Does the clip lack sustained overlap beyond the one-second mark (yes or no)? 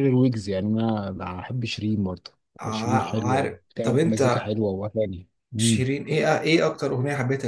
no